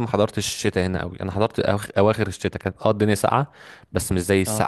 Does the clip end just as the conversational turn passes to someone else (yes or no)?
no